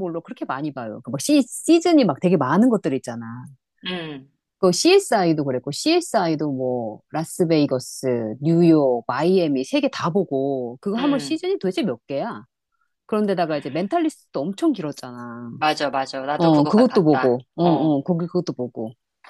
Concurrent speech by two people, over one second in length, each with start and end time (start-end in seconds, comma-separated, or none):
16.4-17.9